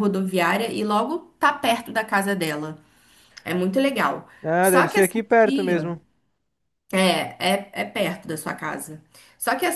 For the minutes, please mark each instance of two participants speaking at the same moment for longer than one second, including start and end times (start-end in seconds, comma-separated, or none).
4.4-5.9